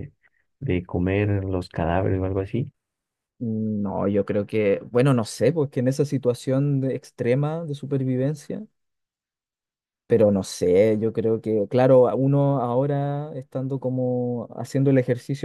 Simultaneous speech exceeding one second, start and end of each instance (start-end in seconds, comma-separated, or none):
none